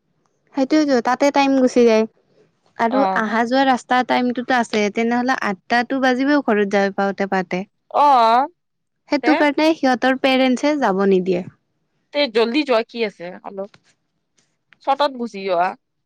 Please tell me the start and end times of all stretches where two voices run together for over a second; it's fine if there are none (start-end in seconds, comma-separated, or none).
none